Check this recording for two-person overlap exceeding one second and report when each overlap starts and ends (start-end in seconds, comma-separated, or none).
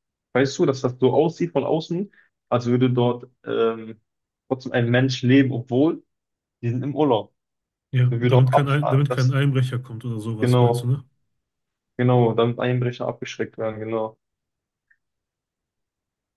8.1-9.4